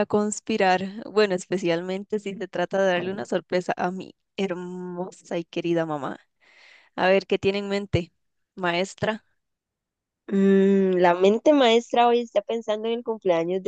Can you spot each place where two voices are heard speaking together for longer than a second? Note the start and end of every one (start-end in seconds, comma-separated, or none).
none